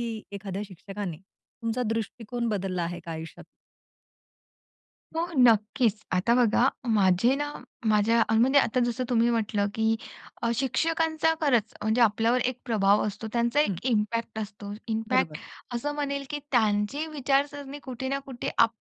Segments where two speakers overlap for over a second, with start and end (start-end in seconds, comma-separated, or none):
none